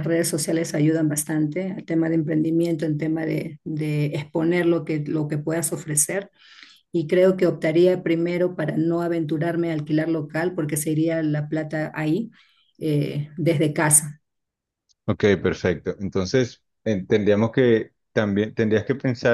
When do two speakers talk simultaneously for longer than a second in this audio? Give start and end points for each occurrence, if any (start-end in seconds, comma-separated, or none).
none